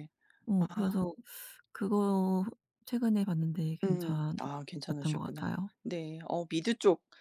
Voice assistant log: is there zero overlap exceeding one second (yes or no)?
no